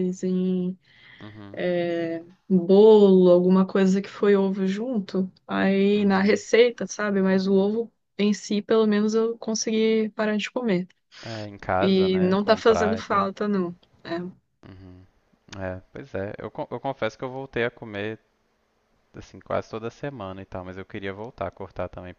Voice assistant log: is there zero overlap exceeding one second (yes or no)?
no